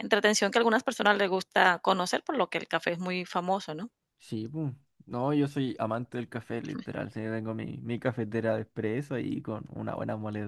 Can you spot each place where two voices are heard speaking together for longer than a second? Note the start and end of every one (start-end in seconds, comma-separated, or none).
none